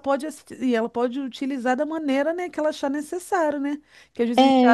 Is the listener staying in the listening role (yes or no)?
yes